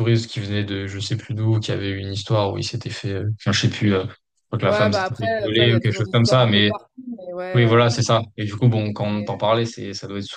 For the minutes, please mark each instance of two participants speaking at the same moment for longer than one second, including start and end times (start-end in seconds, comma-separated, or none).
4.6-6.7